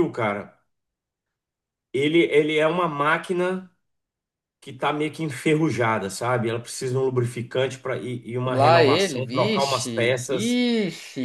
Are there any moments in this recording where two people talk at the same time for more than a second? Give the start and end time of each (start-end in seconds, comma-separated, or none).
8.5-10.6